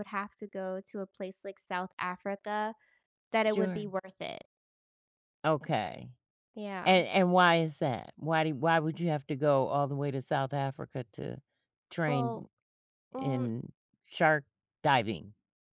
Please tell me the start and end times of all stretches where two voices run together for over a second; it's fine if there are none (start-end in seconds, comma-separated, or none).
none